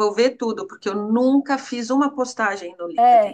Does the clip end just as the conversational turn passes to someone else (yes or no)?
yes